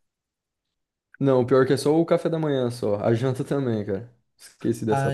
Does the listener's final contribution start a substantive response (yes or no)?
yes